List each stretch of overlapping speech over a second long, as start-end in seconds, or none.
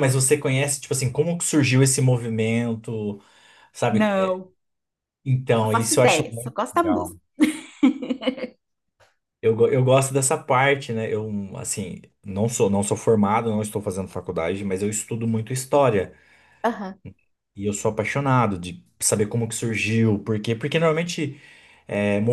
5.6-7.2